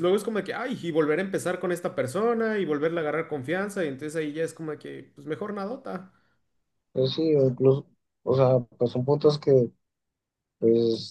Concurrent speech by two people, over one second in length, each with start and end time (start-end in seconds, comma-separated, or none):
none